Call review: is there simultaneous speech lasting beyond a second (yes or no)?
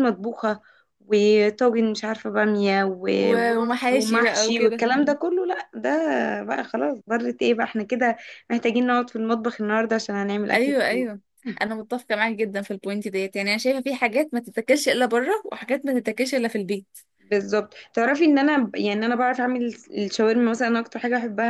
yes